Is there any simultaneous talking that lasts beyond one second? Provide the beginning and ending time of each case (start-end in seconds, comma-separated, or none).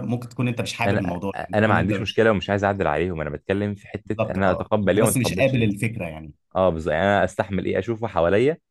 0.9-2.3, 4.0-5.7